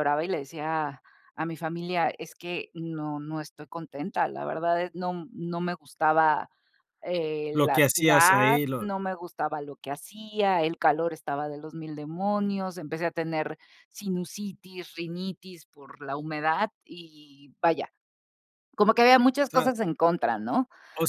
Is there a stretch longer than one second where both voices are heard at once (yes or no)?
yes